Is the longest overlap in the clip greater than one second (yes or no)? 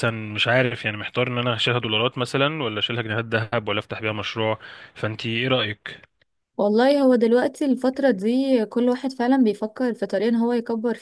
no